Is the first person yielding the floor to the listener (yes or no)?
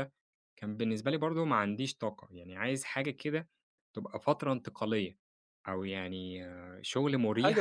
yes